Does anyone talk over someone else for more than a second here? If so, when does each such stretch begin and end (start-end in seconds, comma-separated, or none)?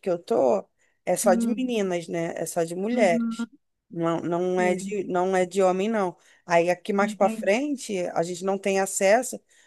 none